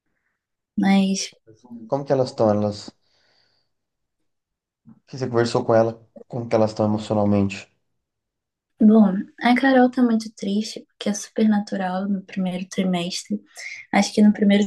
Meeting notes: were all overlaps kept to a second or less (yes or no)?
yes